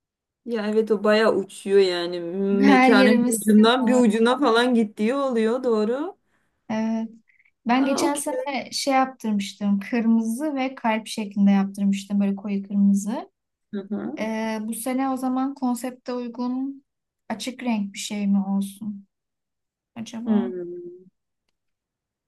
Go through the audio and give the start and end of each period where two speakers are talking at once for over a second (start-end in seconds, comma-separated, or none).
2.6-4.0